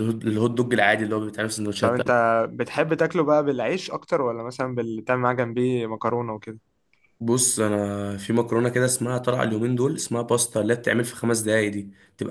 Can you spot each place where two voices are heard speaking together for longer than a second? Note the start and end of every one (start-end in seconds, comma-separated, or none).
none